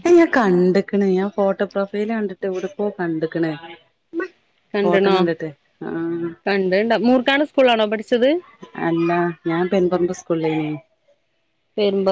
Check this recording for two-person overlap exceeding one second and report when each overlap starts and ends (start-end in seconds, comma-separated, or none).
none